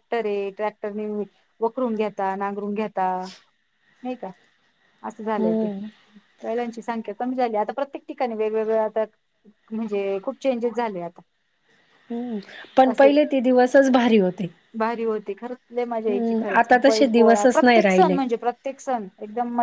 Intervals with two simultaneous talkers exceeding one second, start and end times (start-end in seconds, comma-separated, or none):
16.1-18.2